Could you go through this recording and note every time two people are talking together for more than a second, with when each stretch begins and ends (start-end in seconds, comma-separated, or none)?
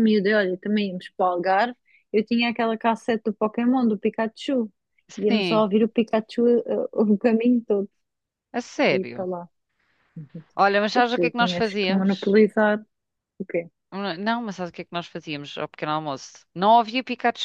10.9-12.4